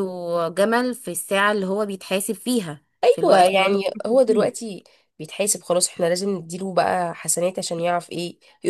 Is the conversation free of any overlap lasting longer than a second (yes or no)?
no